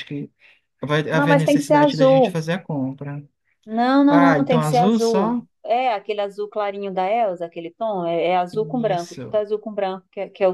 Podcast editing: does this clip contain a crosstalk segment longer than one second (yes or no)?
yes